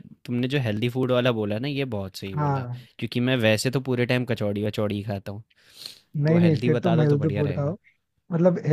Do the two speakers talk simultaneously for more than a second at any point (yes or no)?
yes